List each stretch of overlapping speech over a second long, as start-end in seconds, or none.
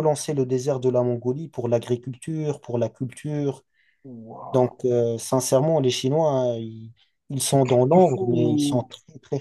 7.5-8.9